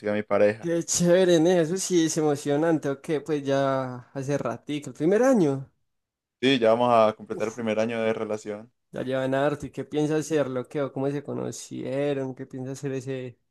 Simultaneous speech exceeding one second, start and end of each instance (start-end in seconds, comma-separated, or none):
none